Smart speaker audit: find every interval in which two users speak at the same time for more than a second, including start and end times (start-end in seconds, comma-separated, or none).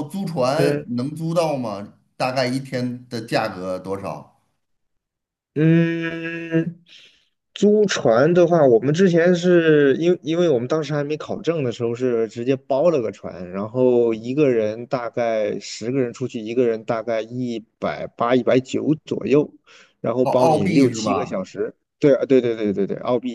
20.2-21.4